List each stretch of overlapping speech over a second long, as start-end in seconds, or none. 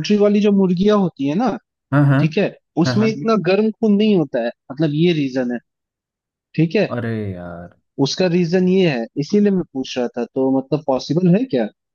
none